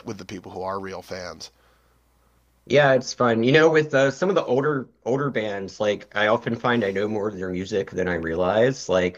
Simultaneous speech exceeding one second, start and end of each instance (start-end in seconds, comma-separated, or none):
none